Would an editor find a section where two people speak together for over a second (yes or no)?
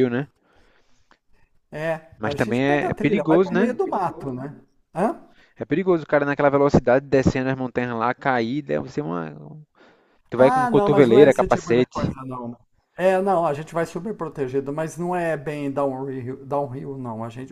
yes